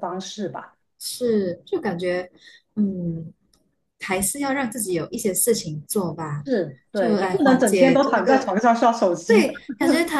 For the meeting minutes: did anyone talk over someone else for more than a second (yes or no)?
yes